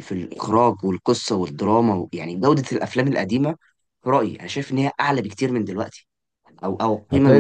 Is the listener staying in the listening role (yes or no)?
yes